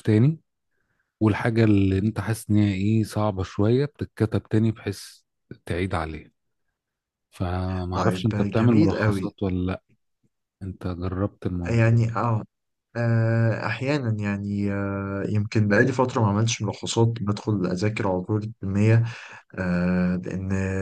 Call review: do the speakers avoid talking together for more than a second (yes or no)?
no